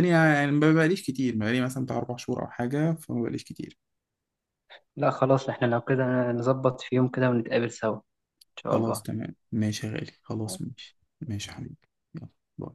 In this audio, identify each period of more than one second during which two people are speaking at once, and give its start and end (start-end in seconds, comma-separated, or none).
none